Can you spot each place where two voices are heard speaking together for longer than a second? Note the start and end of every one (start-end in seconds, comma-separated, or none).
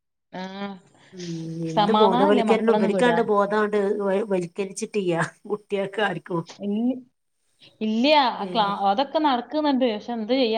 1.8-3.2